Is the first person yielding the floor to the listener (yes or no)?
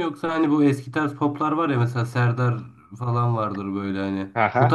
no